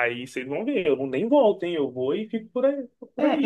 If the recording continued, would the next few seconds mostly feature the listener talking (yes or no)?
yes